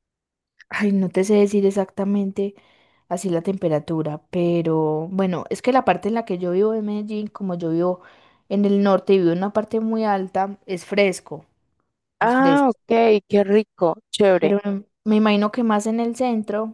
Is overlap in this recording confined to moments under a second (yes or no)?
yes